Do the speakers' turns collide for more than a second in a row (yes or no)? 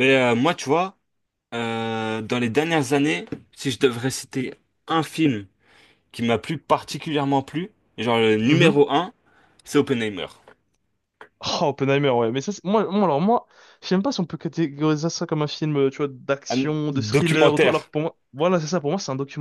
yes